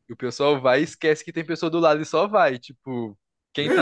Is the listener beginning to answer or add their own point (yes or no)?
yes